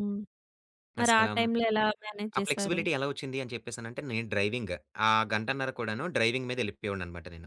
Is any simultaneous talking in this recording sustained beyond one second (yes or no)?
no